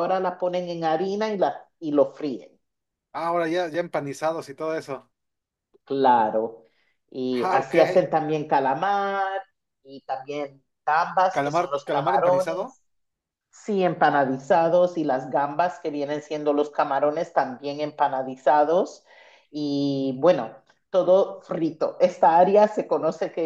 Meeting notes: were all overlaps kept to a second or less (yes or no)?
no